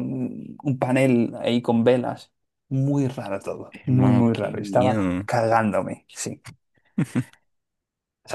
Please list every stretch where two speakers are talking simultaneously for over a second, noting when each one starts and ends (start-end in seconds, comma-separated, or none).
3.7-5.3